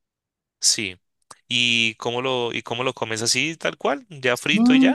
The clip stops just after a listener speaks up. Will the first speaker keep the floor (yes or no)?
no